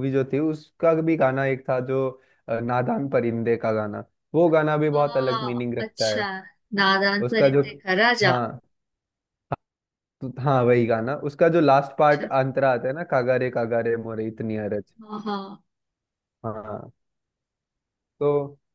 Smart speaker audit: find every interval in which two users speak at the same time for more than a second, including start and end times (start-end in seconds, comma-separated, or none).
4.9-6.2